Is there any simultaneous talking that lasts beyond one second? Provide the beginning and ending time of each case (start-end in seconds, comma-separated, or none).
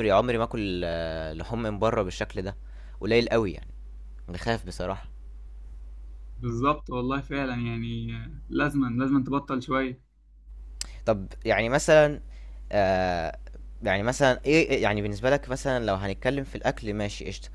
none